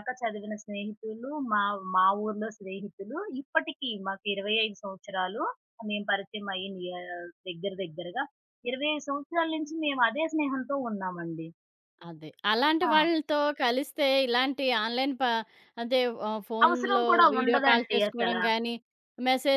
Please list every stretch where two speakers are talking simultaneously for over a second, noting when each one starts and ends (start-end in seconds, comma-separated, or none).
16.6-18.4